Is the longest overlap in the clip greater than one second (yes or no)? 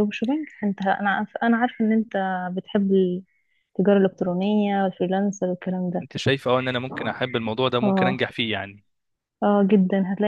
no